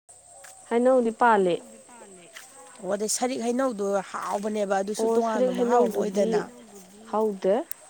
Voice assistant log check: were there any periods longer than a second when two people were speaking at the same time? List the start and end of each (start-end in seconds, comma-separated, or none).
5.0-6.4